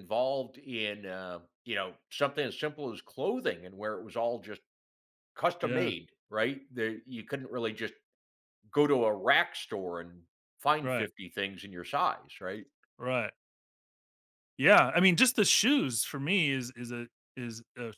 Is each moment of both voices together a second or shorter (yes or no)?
yes